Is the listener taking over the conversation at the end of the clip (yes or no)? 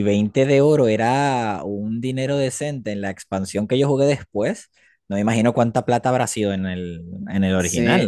yes